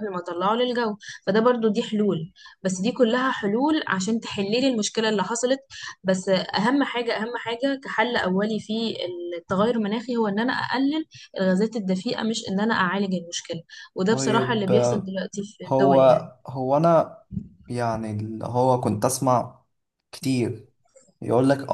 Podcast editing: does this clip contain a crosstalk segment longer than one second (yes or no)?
no